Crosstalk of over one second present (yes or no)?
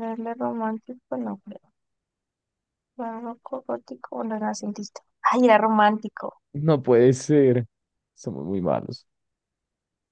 no